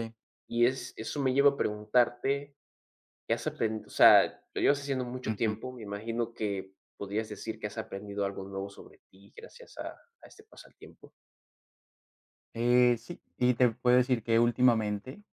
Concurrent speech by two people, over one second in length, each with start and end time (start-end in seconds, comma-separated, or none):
none